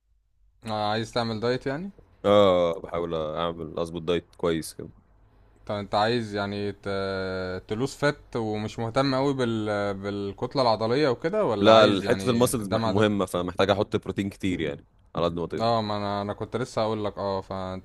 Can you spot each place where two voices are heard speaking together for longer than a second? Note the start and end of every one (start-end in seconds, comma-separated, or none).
11.6-13.1